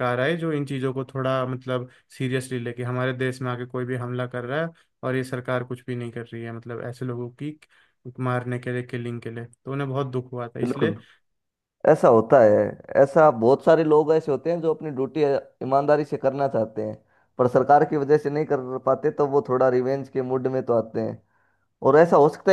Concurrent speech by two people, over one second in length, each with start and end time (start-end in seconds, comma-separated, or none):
none